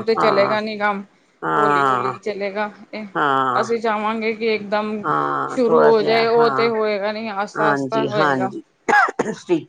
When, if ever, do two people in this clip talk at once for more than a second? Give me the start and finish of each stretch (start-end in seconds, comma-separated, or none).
none